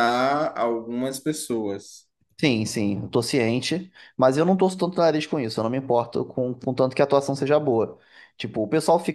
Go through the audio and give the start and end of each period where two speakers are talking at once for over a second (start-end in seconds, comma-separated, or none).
none